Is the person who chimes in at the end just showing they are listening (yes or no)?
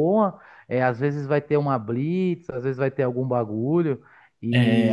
no